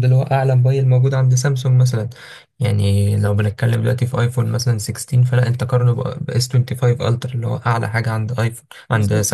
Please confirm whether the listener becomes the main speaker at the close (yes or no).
yes